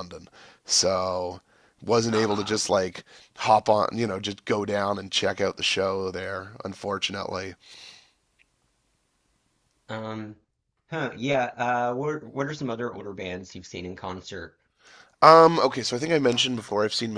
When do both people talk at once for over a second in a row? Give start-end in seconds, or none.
none